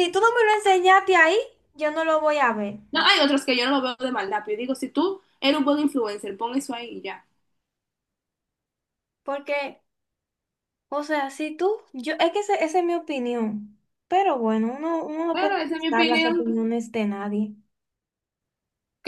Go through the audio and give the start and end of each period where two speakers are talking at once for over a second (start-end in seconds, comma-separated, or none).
15.3-16.6